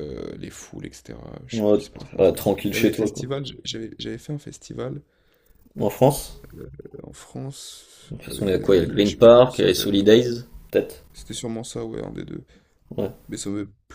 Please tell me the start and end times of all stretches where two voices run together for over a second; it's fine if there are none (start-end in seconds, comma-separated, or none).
1.5-3.2, 8.1-9.9